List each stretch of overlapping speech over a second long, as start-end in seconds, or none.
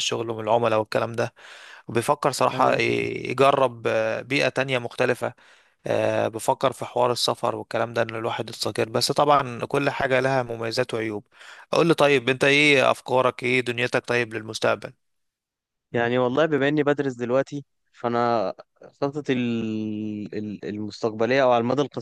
none